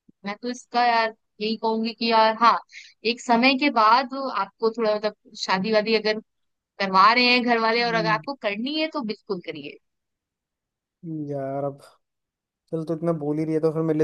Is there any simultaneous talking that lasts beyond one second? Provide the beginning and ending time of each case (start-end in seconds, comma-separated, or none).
none